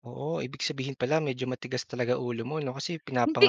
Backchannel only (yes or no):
yes